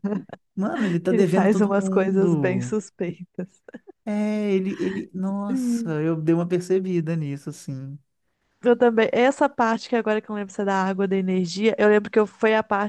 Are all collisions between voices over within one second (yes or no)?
no